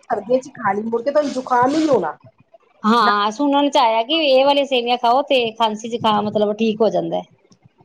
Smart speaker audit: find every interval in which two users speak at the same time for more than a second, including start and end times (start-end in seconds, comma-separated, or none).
none